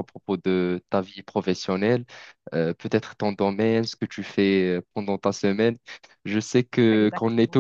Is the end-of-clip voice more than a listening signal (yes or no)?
no